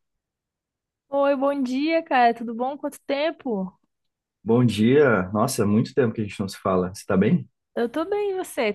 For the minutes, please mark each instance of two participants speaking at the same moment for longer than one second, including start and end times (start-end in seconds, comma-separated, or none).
none